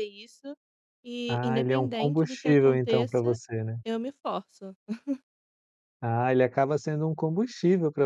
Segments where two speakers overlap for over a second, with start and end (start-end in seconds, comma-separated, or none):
1.3-3.4